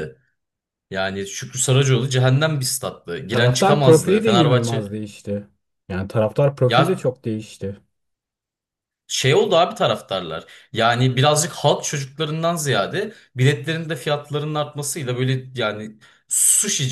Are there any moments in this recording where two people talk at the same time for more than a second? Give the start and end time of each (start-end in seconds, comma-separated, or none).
3.3-4.9